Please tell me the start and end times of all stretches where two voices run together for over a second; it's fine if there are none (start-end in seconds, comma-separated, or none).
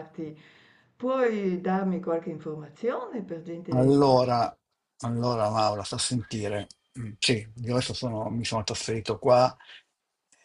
none